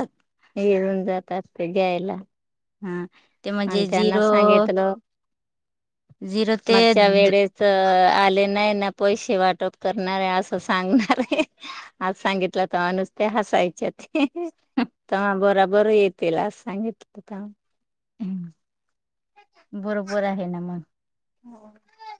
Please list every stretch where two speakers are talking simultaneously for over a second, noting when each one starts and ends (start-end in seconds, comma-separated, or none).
none